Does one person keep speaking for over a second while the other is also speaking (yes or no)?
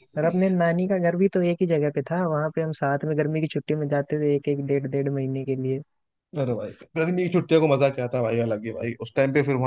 no